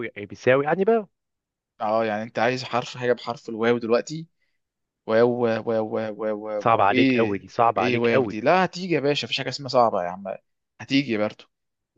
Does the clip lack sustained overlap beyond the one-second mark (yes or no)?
no